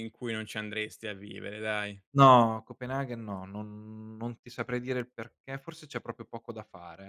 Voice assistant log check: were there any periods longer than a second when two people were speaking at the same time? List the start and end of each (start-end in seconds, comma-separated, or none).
none